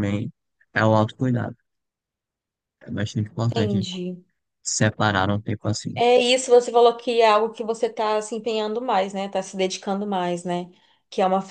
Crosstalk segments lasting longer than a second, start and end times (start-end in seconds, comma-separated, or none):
none